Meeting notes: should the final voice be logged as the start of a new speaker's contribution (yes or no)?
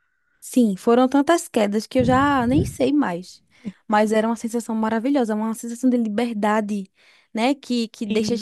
no